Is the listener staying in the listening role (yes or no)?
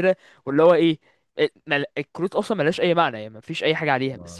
yes